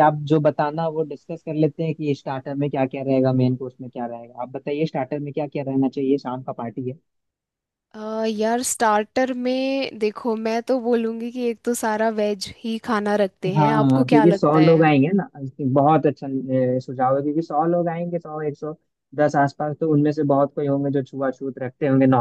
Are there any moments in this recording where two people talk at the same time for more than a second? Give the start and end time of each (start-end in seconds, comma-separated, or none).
13.6-14.9